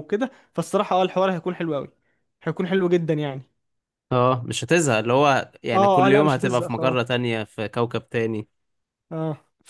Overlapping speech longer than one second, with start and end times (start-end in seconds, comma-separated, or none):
5.7-7.2